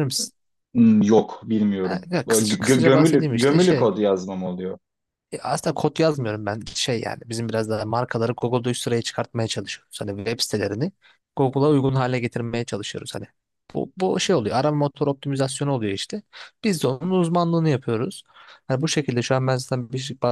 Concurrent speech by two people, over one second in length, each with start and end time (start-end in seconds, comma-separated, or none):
1.8-3.9